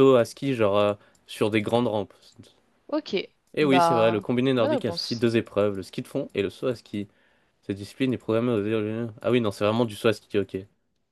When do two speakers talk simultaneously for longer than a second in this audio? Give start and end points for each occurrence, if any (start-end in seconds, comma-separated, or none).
3.6-5.3